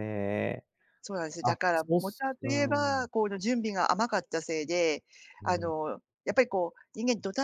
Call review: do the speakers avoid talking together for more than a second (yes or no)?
no